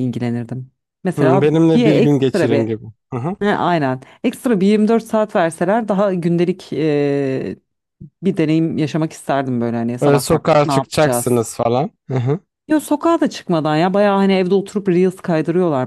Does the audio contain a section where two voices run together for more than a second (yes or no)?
yes